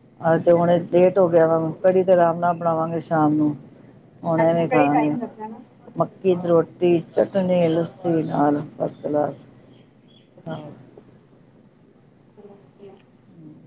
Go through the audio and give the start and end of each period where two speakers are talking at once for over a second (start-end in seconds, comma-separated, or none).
4.4-5.6